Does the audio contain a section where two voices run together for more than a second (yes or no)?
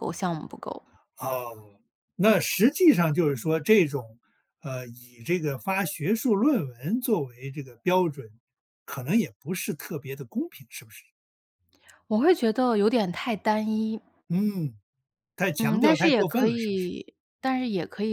yes